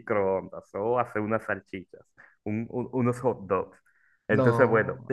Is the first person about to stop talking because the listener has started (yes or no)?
no